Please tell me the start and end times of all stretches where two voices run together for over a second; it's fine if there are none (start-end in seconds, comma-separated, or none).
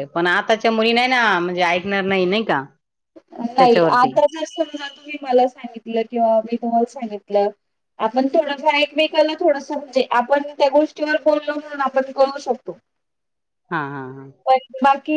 none